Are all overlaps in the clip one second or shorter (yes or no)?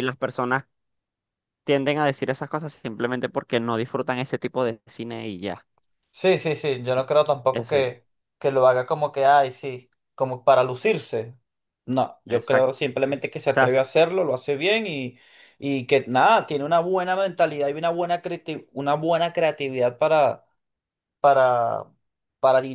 no